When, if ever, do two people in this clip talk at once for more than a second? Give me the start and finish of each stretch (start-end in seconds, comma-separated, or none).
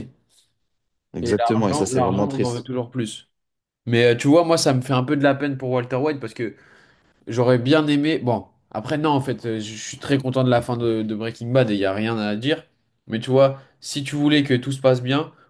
1.2-2.7